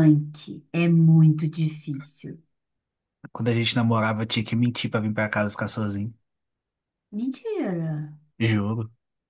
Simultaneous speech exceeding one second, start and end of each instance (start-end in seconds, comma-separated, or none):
none